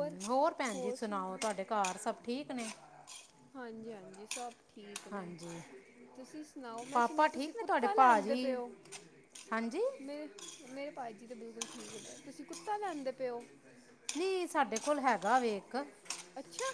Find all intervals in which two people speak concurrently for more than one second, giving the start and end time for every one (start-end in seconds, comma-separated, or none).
6.9-8.6